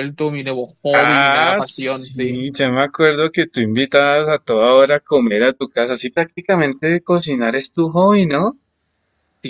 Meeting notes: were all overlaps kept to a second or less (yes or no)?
no